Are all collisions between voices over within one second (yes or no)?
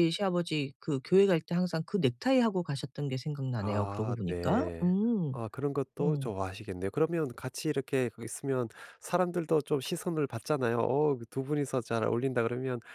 no